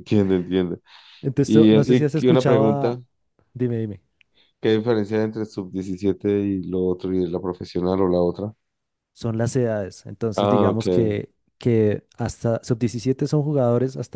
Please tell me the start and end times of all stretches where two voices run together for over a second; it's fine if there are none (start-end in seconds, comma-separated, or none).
1.4-3.0